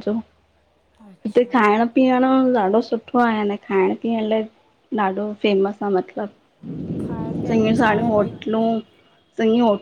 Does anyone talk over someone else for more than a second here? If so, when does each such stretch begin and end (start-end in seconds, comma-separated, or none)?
7.0-8.3